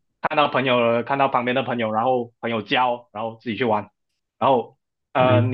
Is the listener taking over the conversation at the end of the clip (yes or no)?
no